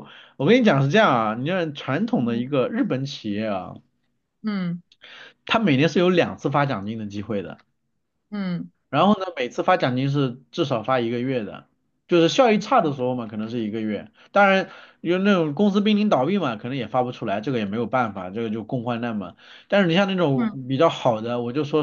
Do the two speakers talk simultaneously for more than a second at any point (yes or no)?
no